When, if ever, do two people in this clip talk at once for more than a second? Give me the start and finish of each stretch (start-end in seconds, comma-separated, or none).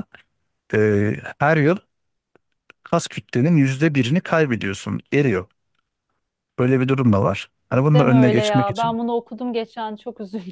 7.7-9.0